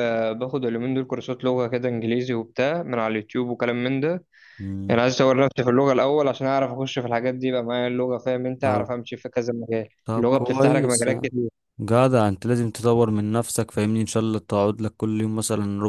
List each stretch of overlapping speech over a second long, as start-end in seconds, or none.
10.1-11.3